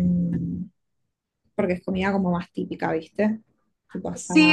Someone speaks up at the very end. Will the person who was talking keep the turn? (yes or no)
no